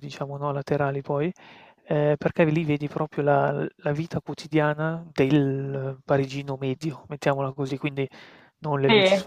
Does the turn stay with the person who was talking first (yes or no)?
yes